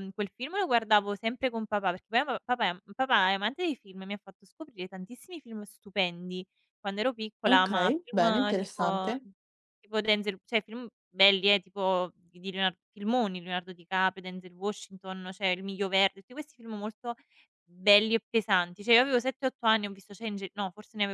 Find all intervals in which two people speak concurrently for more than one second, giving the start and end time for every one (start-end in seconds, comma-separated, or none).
7.5-9.1